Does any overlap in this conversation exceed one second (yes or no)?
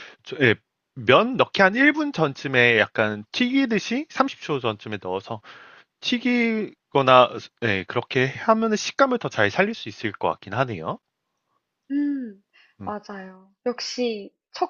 no